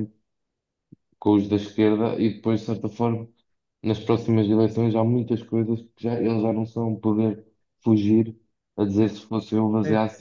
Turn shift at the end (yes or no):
no